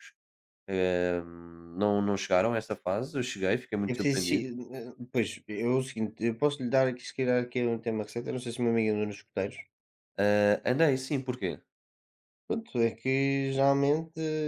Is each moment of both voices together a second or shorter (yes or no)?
yes